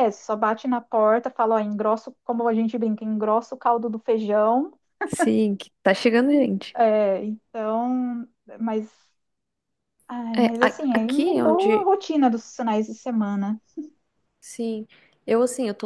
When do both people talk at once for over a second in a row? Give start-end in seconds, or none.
10.4-11.9